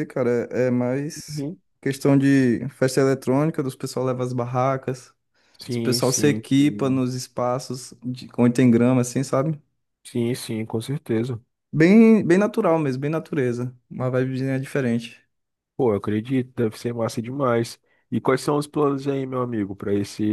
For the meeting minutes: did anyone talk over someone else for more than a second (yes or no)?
yes